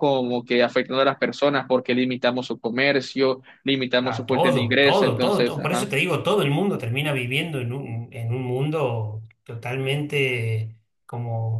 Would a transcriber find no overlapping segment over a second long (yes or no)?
no